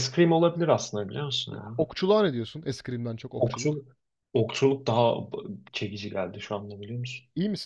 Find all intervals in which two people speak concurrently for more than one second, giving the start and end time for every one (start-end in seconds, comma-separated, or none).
none